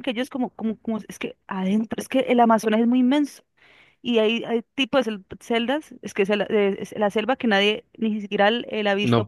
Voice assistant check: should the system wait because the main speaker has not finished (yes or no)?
no